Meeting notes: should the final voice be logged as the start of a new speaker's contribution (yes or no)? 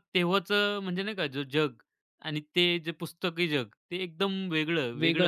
yes